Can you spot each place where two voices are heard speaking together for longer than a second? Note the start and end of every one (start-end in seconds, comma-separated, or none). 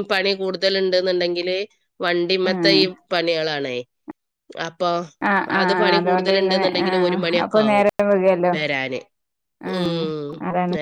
5.6-7.9